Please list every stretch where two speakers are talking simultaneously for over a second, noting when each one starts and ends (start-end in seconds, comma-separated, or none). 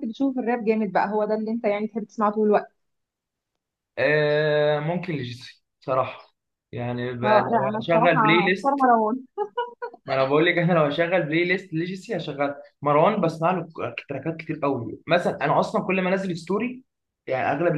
7.2-8.8